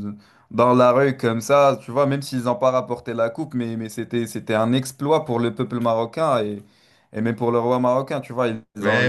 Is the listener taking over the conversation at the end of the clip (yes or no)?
yes